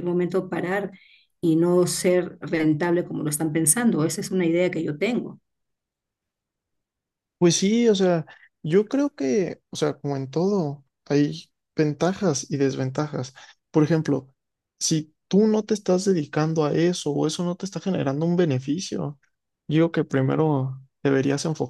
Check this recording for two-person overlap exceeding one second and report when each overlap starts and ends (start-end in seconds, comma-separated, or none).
none